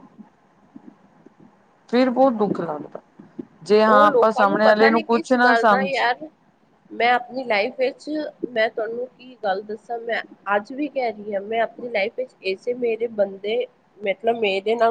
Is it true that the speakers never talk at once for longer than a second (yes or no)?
no